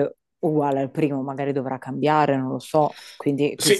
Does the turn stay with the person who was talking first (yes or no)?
no